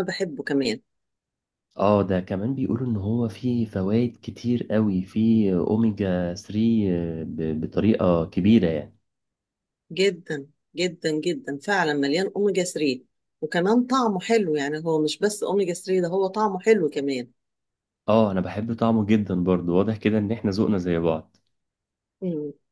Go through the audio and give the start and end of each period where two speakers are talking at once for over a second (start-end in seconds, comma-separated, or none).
none